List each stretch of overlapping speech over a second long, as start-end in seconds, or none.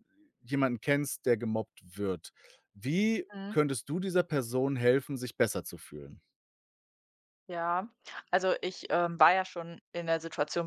none